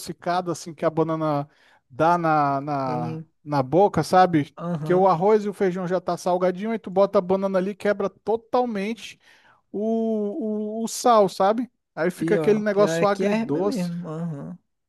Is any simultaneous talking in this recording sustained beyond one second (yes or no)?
yes